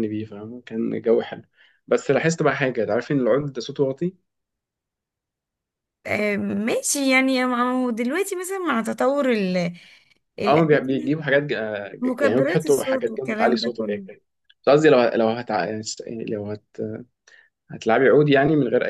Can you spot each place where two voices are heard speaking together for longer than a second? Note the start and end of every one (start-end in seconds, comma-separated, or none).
12.0-14.0